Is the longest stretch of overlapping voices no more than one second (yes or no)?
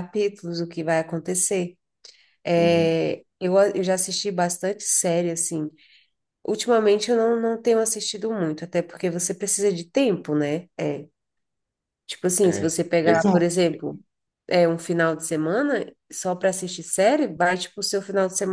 no